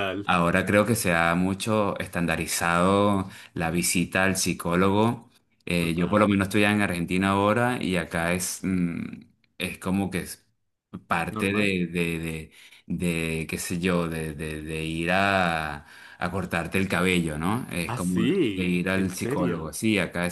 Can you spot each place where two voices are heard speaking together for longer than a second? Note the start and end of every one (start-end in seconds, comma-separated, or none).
17.8-19.7